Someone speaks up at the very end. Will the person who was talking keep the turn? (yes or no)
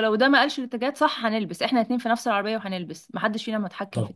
no